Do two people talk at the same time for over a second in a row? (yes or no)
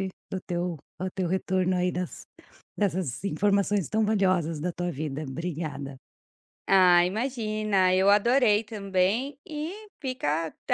no